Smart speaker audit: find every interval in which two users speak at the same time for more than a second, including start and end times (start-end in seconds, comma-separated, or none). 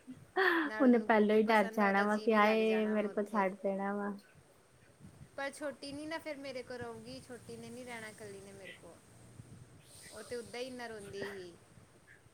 0.8-3.5